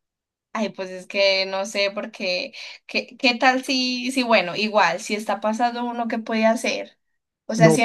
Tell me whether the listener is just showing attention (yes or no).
yes